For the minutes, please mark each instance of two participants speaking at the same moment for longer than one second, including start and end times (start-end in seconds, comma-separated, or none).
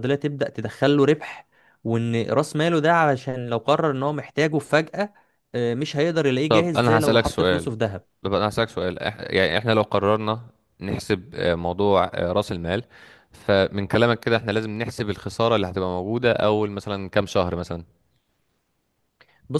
6.5-7.7